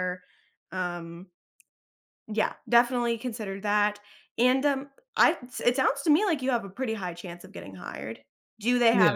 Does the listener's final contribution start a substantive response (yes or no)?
no